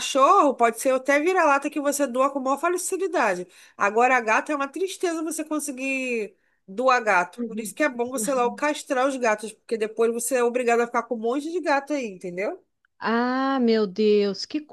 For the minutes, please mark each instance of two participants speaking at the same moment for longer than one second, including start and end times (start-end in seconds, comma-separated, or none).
none